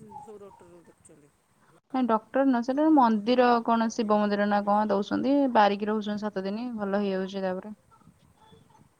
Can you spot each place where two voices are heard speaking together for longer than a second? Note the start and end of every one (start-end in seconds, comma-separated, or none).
2.7-4.8